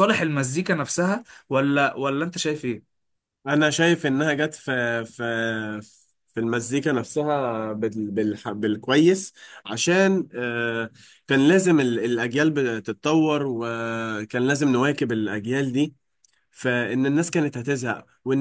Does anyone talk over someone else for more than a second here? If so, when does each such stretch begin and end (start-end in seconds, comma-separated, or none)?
none